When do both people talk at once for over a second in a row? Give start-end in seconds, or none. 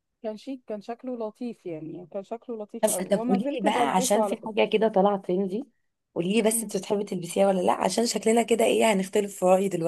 2.8-4.5